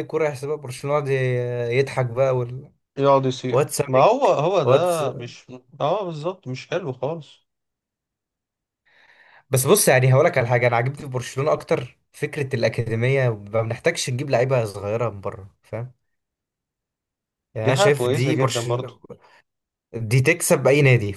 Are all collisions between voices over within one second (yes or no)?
no